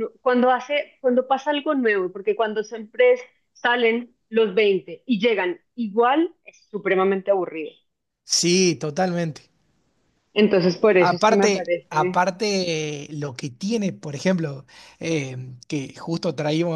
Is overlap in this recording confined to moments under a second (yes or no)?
no